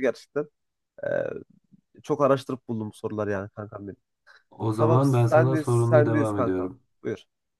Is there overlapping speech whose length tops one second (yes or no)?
yes